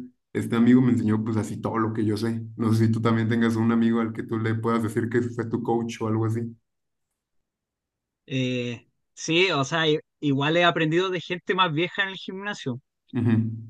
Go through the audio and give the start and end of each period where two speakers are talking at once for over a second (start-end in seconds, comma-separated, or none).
none